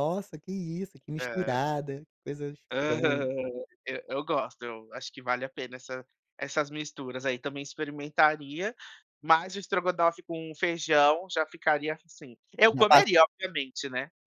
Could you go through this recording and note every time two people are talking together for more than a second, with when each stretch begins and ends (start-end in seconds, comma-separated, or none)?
none